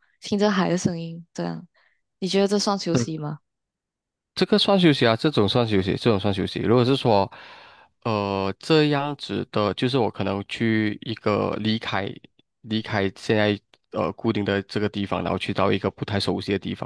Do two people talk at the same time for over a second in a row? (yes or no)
no